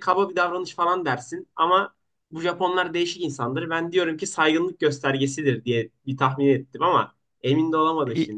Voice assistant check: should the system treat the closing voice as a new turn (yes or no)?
yes